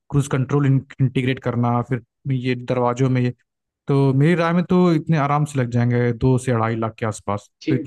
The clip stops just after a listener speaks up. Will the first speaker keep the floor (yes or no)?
no